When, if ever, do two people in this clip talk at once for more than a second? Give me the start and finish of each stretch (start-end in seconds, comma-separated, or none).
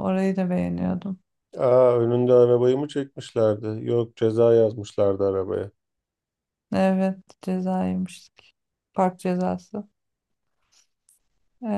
none